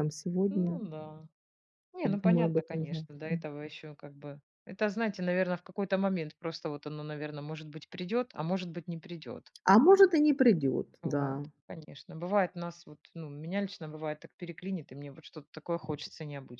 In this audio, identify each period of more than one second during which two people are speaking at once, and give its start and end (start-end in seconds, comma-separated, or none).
2.0-3.4